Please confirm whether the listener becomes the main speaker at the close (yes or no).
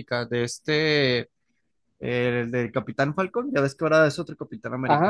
yes